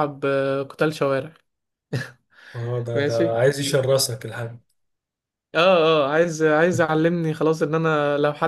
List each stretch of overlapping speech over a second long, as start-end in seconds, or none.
none